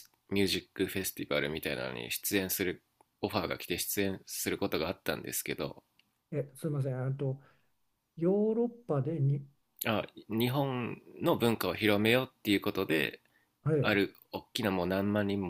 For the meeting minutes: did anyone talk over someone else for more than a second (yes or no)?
no